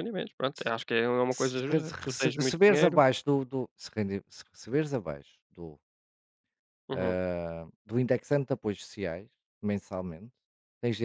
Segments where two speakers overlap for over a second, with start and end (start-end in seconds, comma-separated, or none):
1.3-3.0